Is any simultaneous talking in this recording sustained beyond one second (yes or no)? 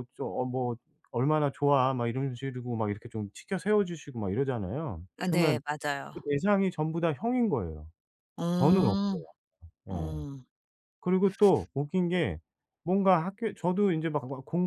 no